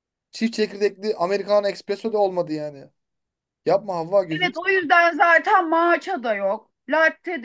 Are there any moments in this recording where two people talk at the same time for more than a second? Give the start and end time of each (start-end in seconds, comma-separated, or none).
none